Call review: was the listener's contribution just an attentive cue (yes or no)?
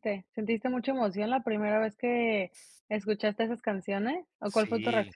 no